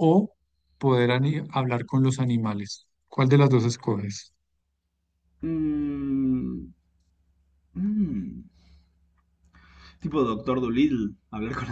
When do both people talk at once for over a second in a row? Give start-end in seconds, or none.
none